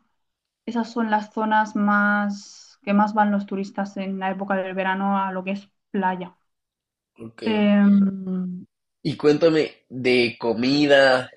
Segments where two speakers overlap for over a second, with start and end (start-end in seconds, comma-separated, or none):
none